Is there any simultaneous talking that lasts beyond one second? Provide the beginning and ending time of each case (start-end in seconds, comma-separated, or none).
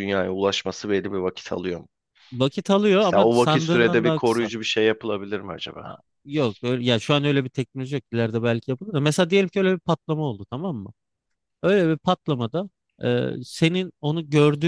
3.0-4.5